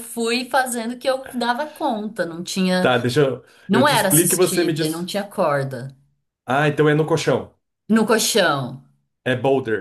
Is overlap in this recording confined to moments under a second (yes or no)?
no